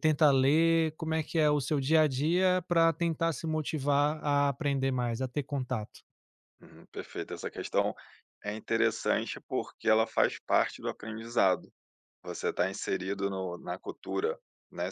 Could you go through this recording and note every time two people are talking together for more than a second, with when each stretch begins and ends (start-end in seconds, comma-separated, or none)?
none